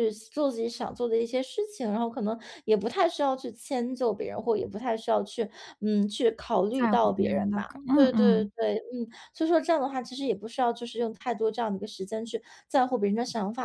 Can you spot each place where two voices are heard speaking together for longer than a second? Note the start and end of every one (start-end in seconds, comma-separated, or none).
6.7-8.5